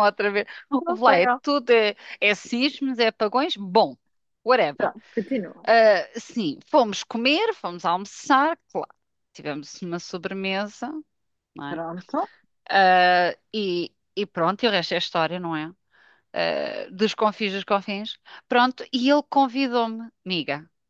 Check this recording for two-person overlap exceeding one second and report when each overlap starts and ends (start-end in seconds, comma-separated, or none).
none